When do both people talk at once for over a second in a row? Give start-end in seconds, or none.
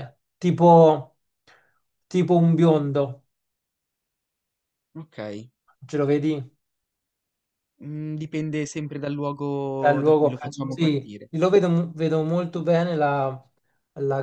9.8-11.3